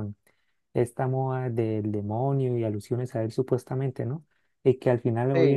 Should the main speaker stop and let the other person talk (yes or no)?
no